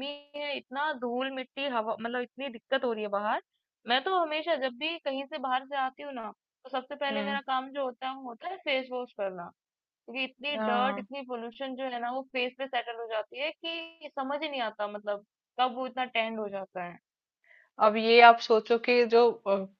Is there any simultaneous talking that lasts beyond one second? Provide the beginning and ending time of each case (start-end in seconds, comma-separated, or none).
none